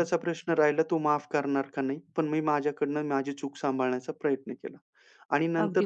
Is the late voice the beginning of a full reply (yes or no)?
no